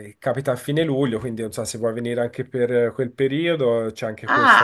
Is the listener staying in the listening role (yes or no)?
no